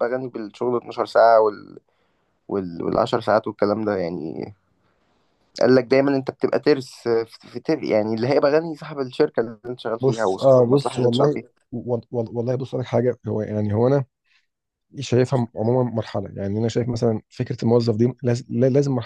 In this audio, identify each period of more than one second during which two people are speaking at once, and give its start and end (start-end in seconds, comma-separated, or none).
10.0-11.5